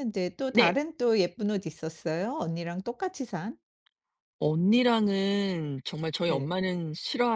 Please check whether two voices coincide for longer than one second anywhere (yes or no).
no